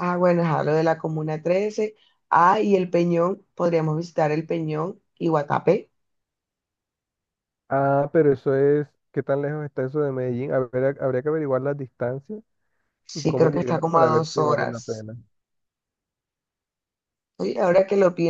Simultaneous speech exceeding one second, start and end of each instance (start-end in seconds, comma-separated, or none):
13.1-15.1